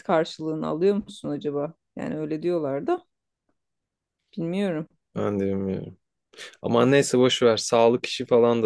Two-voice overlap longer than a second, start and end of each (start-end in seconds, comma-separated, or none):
none